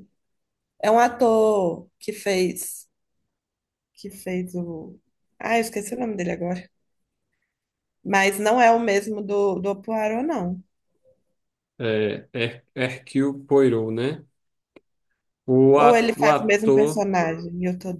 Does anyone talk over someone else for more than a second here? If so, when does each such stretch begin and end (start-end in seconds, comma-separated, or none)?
15.7-17.1